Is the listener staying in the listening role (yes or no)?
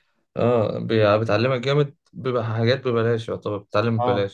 no